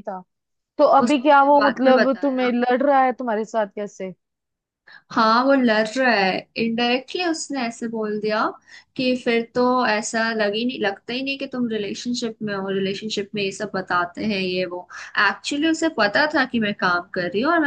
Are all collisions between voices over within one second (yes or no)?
no